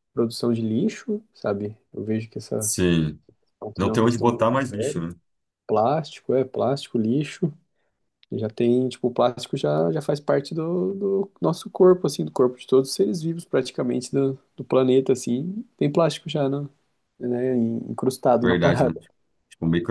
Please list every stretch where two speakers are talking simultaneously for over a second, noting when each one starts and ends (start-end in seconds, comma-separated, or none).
3.8-5.0